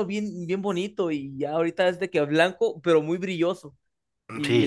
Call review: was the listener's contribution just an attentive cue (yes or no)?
no